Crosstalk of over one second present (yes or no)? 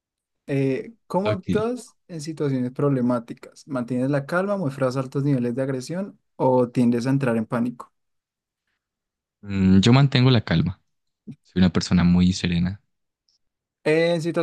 no